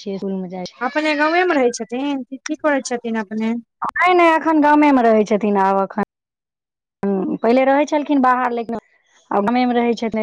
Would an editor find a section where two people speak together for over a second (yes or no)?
no